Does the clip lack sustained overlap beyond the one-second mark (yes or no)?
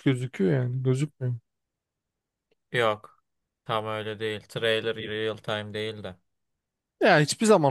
yes